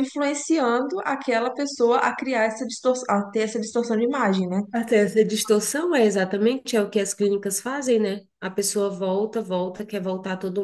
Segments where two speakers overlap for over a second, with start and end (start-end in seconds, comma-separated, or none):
none